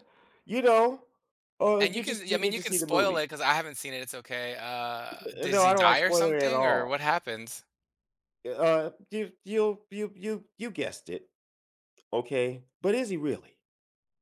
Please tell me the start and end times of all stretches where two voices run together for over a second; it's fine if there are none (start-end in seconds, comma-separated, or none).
1.8-3.2, 5.4-7.0